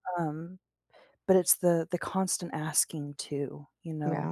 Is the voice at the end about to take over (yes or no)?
no